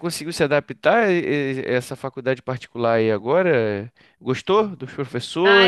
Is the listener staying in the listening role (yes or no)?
no